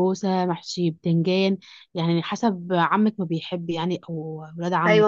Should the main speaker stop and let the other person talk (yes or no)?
yes